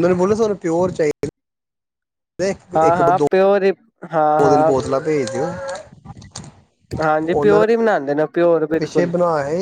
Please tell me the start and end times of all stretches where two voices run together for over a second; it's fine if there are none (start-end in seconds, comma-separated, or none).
7.2-9.1